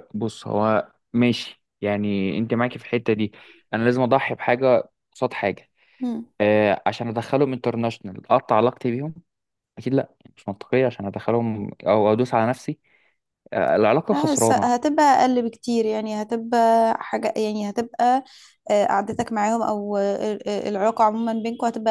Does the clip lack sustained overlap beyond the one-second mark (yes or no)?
yes